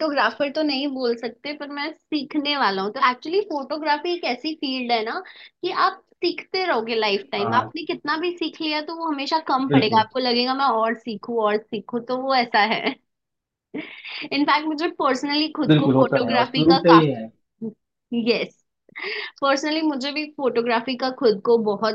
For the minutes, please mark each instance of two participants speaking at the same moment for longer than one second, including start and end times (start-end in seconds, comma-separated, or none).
15.7-17.3